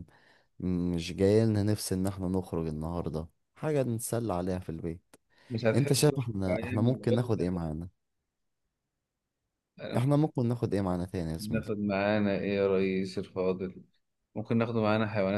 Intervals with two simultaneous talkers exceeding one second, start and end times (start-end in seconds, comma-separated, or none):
5.7-7.4